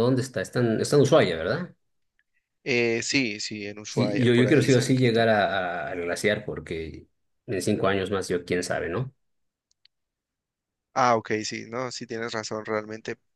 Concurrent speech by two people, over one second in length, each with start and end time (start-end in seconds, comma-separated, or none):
3.9-5.2